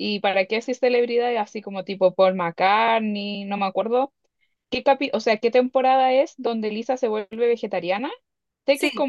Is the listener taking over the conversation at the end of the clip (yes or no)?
no